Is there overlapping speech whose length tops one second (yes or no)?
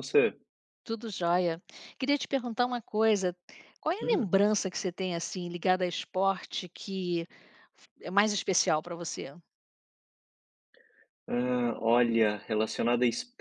no